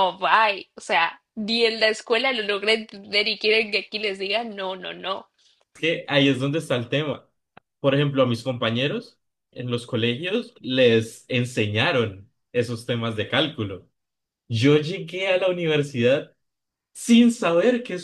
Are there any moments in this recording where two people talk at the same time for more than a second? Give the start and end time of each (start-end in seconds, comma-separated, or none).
none